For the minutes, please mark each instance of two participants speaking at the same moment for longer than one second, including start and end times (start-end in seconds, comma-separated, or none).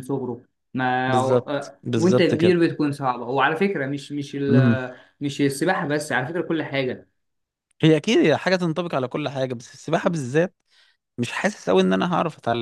1.1-2.3